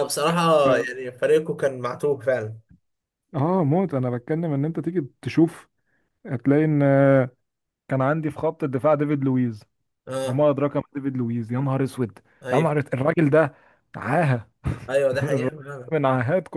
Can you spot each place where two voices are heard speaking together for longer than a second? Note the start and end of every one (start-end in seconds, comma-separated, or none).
none